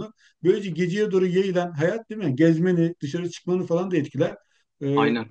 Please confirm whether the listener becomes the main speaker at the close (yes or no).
no